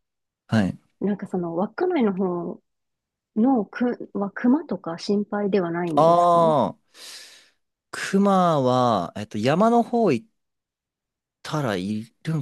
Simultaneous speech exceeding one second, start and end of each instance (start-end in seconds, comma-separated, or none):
none